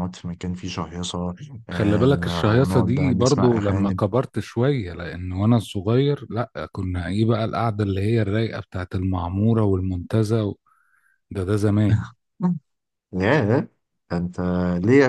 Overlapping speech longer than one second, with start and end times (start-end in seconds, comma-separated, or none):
1.7-4.0